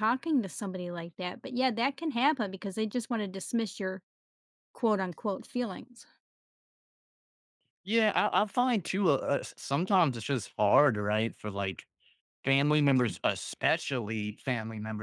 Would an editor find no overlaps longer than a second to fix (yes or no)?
yes